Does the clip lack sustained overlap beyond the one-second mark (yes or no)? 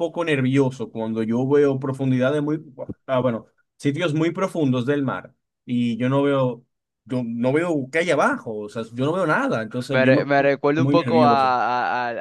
no